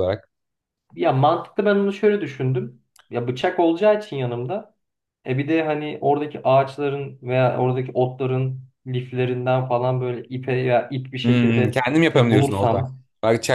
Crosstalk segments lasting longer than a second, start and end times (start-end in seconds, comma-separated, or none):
11.2-12.8